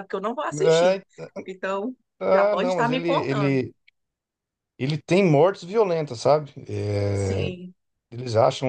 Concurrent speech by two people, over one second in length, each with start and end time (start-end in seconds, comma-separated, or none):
2.2-3.6